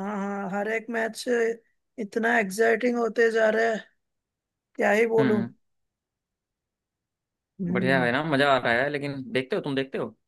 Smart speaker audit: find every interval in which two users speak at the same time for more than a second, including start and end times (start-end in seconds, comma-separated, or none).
none